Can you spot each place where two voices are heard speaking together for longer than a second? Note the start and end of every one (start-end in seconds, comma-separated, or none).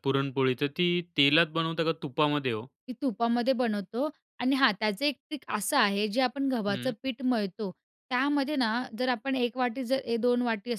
none